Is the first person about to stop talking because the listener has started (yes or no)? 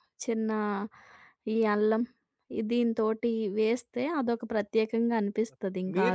yes